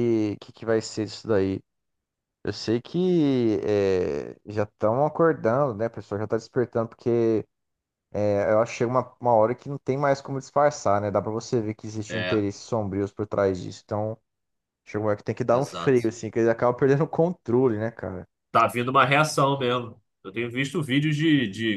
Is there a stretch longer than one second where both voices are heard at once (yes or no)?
no